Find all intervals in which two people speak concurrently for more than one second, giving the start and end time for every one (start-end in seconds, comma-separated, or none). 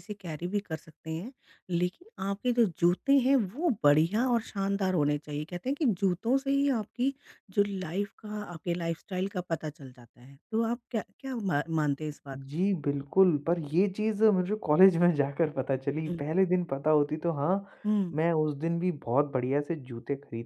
none